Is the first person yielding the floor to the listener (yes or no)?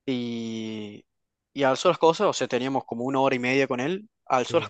no